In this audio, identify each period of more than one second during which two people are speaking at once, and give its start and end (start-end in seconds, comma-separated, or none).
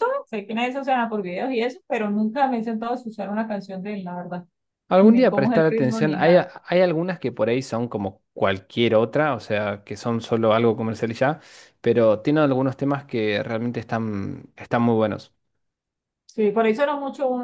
5.0-6.5